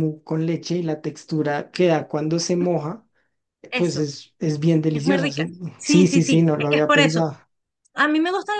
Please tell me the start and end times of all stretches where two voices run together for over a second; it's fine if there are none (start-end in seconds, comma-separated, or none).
4.9-7.2